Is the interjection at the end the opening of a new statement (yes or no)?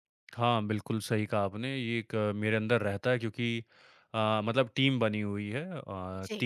no